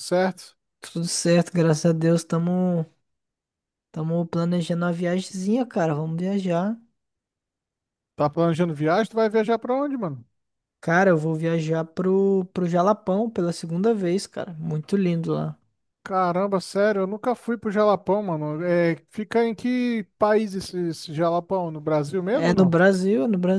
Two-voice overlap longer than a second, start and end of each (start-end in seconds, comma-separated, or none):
none